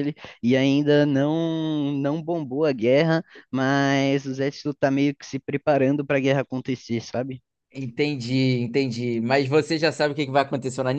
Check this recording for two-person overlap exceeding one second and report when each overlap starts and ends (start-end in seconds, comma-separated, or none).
none